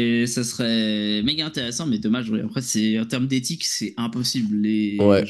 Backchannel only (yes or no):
no